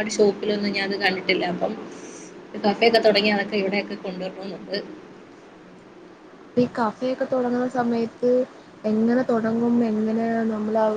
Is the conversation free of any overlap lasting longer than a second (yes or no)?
yes